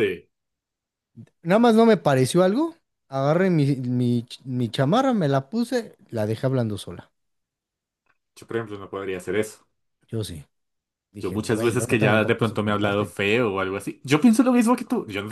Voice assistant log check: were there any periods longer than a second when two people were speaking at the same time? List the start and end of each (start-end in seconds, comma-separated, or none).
11.2-13.1